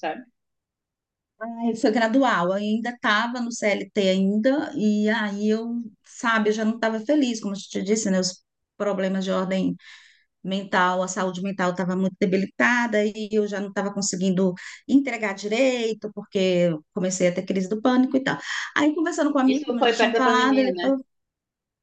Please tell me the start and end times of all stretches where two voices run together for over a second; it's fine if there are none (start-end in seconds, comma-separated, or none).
19.5-20.9